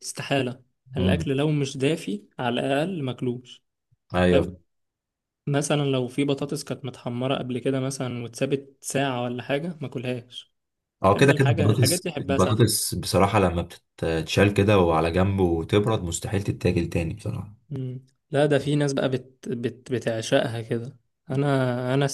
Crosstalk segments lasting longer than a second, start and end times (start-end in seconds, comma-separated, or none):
11.1-12.7